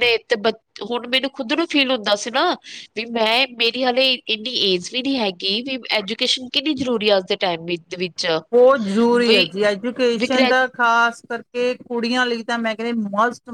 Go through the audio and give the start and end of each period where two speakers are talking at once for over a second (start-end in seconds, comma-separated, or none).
none